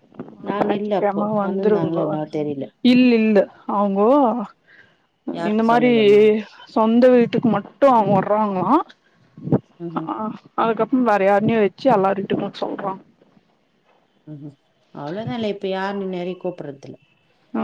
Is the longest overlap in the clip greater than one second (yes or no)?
yes